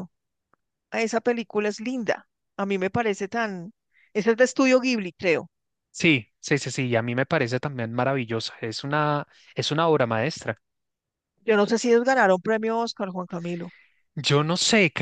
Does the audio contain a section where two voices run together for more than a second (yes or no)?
no